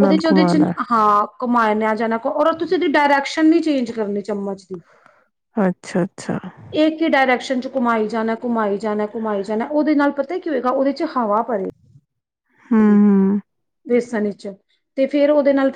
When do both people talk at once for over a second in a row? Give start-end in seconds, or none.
none